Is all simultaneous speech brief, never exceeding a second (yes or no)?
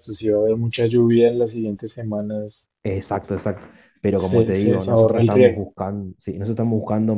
no